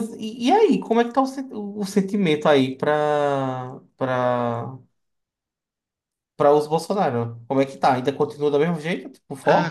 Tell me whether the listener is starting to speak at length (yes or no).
yes